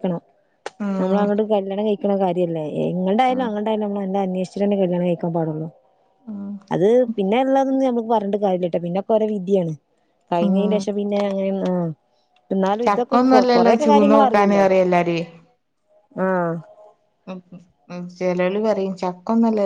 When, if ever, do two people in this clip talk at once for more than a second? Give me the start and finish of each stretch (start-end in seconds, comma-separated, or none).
12.9-14.6